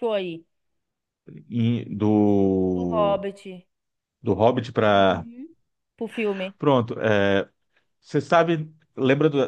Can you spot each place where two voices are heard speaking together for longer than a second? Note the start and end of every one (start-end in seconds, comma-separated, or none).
none